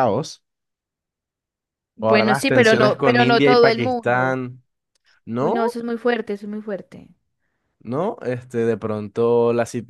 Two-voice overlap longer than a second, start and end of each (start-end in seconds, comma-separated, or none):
2.0-4.4